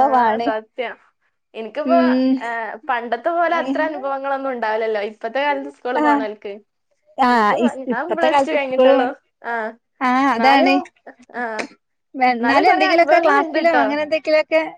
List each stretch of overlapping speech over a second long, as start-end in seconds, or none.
12.4-13.8